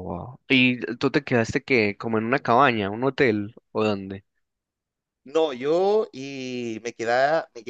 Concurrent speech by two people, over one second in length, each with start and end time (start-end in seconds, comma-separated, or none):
none